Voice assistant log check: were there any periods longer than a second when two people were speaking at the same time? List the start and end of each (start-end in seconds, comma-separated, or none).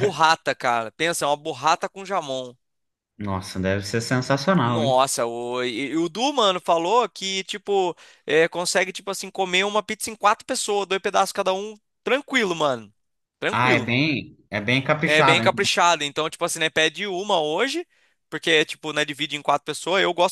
none